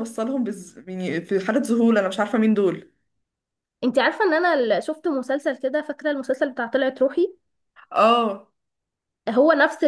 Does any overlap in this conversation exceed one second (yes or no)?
no